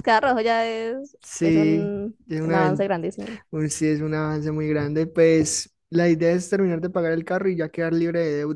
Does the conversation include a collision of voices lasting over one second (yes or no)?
yes